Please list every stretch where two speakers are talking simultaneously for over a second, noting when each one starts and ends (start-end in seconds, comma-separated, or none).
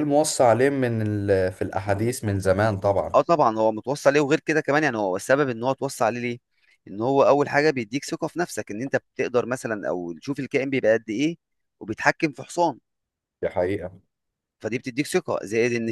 none